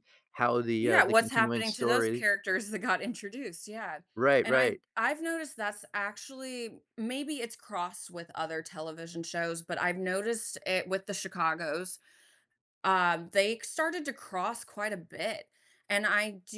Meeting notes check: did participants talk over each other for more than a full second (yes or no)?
yes